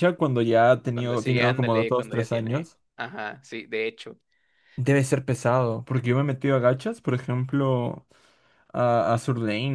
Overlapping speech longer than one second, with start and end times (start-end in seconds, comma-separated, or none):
0.9-2.8